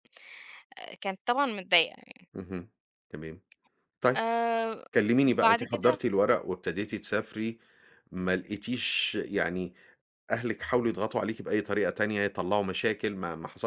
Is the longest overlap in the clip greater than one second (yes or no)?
no